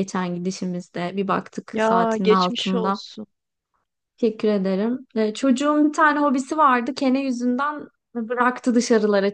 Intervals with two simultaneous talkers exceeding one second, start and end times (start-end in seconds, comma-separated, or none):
1.7-3.0